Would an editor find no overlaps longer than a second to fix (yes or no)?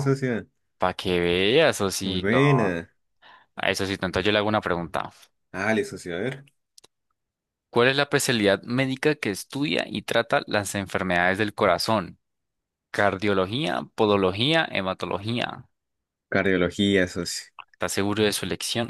yes